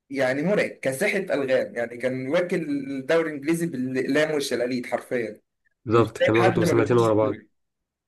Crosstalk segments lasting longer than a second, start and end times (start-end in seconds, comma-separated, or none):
5.9-7.4